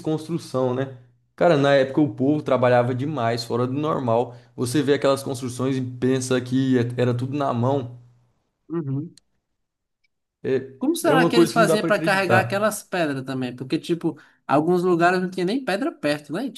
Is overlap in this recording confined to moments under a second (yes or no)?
no